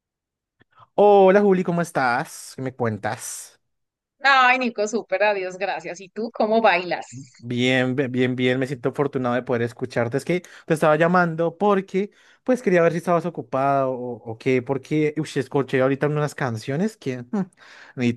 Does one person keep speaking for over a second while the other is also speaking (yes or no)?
no